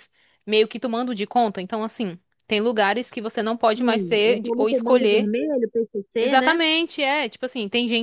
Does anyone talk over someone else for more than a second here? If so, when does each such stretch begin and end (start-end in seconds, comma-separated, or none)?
3.7-5.3